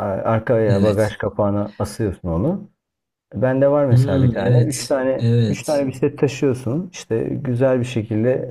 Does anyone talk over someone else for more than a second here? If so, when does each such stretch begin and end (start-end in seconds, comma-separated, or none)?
3.9-5.9